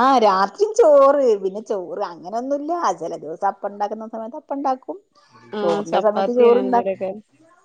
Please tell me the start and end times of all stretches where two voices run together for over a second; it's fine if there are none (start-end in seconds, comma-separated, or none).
5.6-7.0